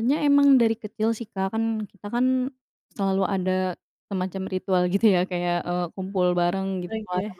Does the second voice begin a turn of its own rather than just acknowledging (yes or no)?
no